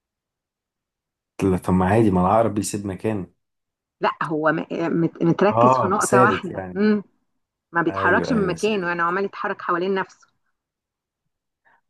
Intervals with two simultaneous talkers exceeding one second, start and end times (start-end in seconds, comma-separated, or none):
5.5-6.8, 7.9-9.2